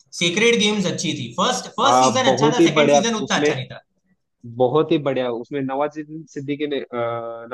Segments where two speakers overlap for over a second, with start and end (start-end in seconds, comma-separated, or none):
1.9-3.5